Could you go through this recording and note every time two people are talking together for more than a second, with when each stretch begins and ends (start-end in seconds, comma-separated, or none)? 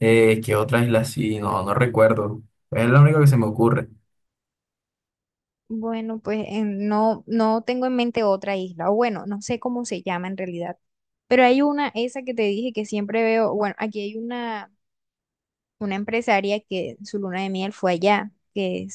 none